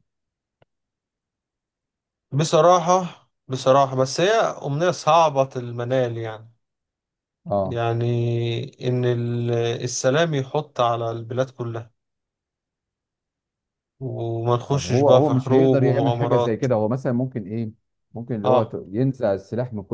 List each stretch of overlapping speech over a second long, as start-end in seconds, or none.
14.7-16.6